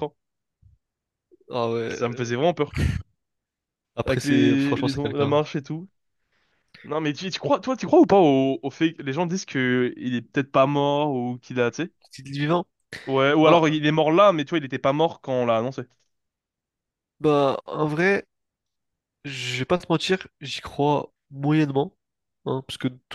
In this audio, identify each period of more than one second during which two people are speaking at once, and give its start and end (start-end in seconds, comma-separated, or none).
4.1-5.4